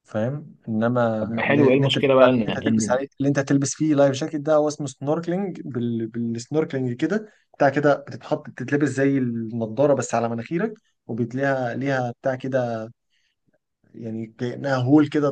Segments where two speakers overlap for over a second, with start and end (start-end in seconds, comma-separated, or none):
1.2-3.0